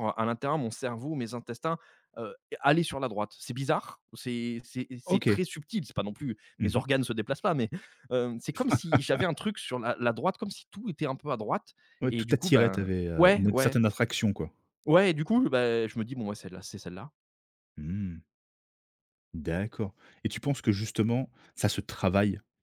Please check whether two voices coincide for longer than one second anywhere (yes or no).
yes